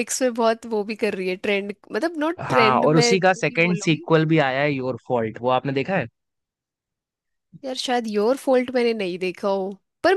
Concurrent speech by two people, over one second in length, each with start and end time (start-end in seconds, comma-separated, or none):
2.4-4.1